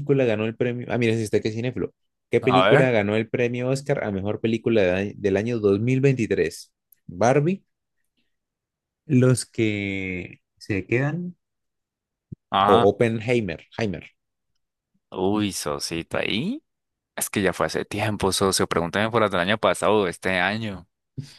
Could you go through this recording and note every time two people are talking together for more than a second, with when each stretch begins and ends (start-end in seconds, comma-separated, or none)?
none